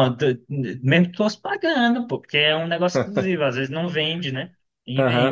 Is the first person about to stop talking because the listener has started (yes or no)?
yes